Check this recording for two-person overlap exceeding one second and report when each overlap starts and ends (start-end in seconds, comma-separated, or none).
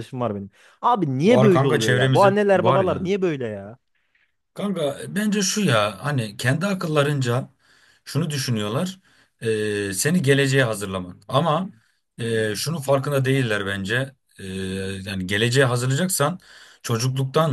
1.2-3.1